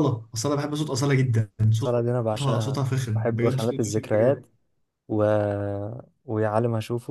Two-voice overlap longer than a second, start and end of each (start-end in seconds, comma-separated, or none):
1.8-4.5